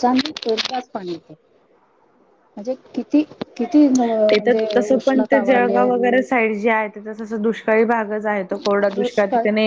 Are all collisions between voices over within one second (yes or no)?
no